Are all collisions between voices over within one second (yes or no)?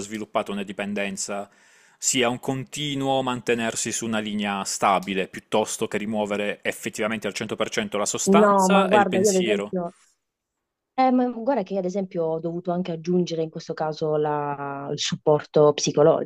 no